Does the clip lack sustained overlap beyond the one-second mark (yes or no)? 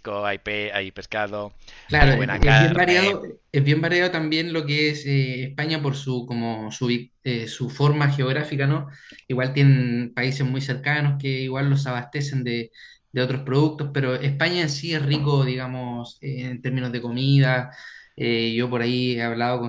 no